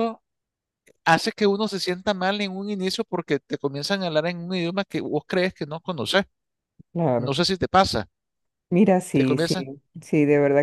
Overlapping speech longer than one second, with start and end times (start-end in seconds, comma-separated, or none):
none